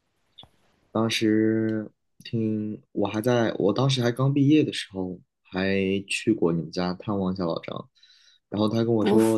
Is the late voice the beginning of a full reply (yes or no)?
no